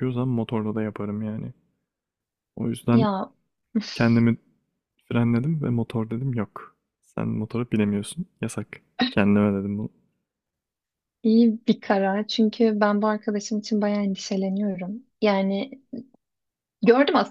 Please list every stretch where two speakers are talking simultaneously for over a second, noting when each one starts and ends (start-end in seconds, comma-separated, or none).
none